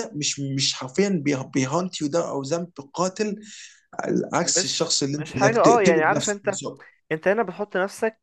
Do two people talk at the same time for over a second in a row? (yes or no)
yes